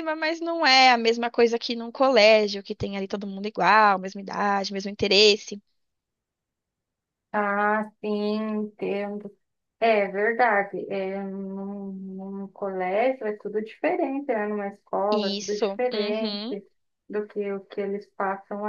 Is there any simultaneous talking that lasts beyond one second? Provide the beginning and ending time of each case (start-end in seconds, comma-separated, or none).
15.1-16.4